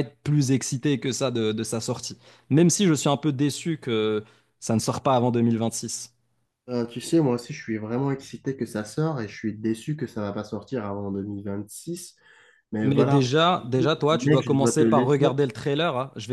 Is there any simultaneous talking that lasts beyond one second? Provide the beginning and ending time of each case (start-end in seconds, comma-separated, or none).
12.8-15.3